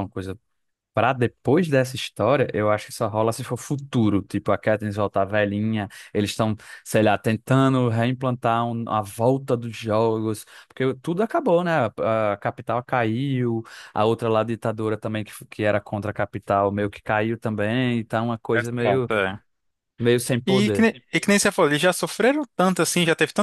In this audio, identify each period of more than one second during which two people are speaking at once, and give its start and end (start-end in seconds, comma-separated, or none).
none